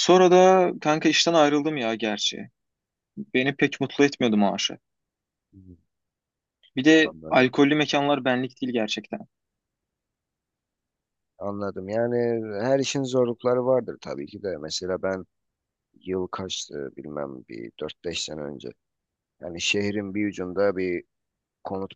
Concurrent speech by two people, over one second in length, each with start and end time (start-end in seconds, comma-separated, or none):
none